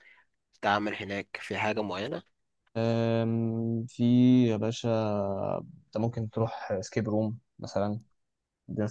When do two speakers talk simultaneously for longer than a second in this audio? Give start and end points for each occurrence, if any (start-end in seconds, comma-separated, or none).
none